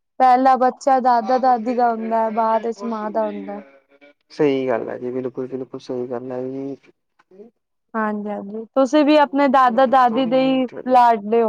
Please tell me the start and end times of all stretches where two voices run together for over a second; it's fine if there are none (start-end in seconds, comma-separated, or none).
none